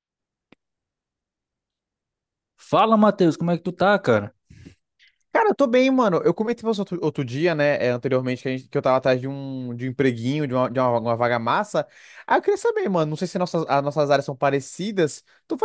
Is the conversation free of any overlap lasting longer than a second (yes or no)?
yes